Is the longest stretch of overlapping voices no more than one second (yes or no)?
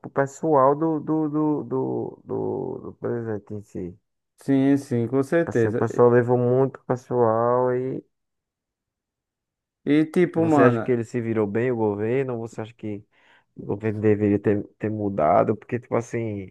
yes